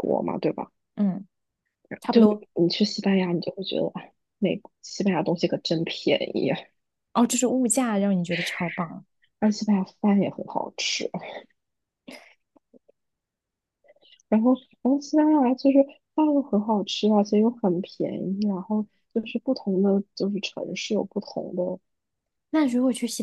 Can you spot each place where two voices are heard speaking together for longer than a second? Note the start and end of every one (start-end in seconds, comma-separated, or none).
none